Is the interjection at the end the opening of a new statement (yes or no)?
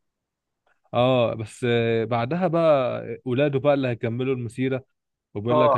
no